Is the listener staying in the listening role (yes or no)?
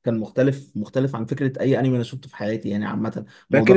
no